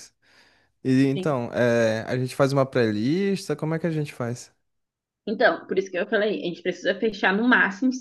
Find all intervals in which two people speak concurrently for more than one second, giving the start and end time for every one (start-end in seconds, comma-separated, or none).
none